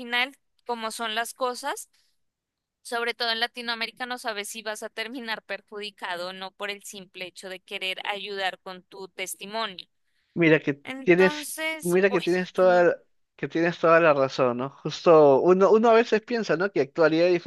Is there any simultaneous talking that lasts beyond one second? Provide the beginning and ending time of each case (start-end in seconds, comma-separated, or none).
10.8-12.8